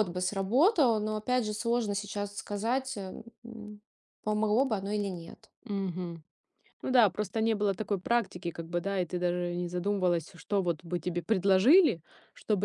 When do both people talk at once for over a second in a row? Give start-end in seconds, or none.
none